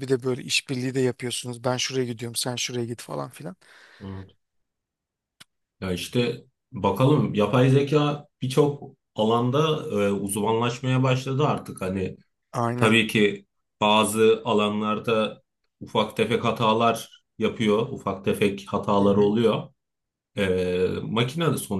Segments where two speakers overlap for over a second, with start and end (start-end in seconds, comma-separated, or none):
none